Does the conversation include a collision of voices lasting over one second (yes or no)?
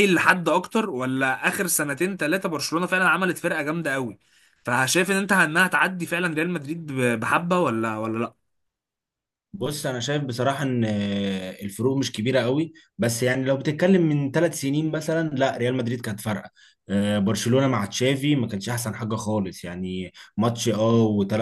no